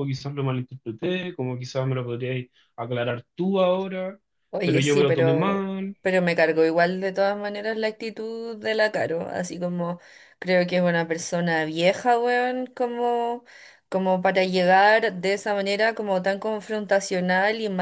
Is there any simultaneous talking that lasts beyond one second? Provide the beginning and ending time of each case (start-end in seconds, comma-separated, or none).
4.6-6.0